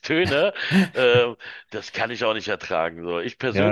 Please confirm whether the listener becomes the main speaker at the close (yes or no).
yes